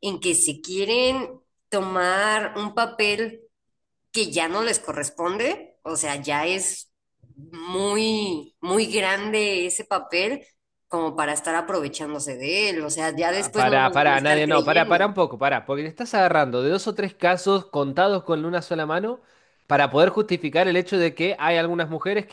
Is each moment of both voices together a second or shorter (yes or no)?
no